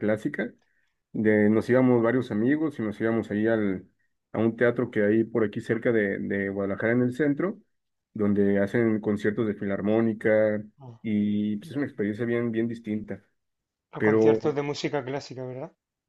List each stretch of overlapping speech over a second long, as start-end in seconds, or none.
none